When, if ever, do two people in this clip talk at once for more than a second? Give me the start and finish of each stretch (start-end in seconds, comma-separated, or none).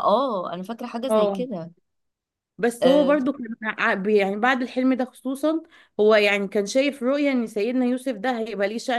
none